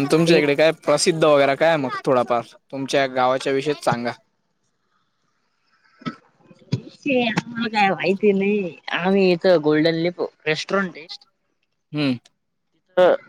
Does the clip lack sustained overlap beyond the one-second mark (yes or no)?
yes